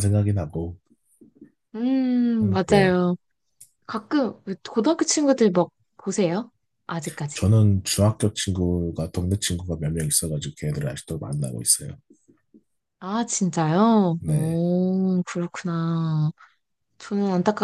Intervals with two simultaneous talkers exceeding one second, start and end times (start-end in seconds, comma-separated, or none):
none